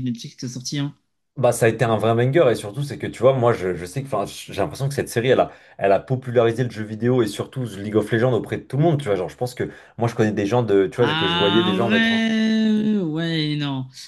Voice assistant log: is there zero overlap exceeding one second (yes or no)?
no